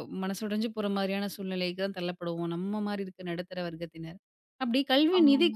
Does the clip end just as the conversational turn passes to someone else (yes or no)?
no